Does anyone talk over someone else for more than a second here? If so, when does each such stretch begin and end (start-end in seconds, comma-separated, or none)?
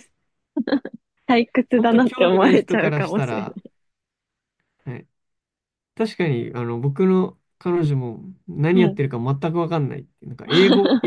1.8-3.5